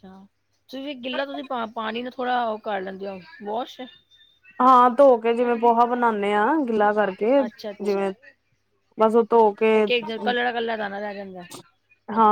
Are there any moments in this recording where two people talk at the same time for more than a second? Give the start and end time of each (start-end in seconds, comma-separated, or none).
none